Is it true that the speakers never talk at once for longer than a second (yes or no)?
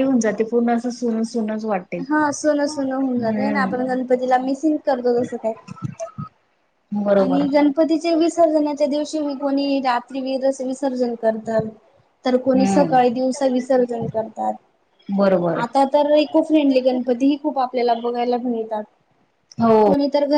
yes